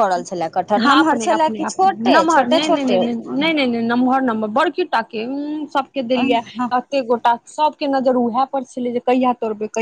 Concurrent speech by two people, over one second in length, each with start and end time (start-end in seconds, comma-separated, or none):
0.8-3.0